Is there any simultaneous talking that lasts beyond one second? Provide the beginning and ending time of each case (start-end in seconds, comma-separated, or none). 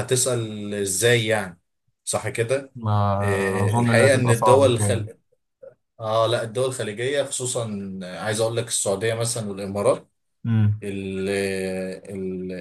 3.2-5.1